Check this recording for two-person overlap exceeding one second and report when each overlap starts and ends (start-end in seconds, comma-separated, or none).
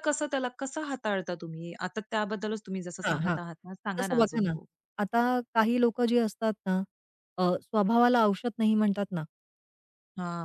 none